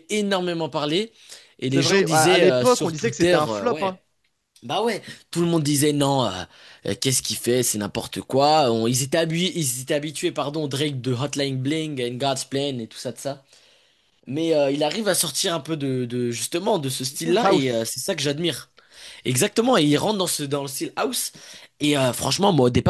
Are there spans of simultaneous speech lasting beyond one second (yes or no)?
yes